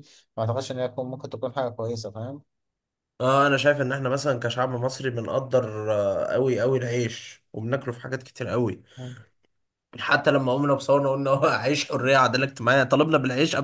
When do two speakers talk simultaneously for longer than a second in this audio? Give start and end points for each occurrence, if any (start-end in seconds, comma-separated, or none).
none